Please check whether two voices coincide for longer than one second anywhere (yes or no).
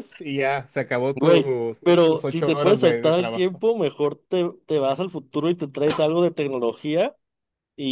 yes